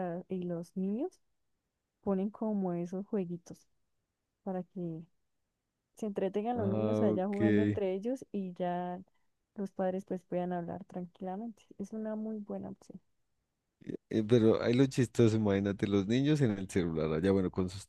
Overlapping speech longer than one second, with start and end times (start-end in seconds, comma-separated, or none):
6.5-7.8